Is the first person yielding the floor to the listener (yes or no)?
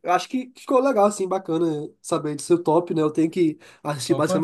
no